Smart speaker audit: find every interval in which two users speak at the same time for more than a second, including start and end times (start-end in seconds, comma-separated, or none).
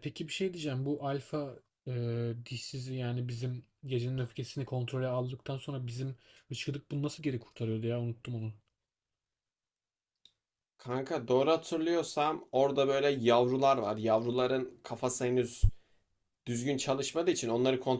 none